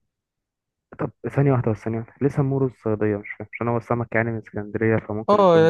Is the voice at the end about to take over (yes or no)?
yes